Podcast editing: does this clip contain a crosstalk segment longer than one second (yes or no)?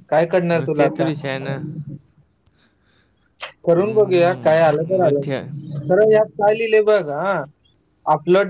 yes